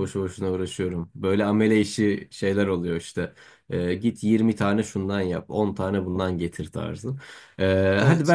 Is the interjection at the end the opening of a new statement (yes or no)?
no